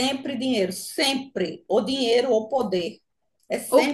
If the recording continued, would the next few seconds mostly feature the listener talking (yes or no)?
yes